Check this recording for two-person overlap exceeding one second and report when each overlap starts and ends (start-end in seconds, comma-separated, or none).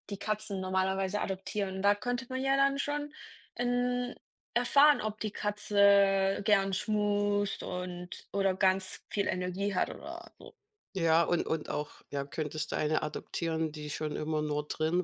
none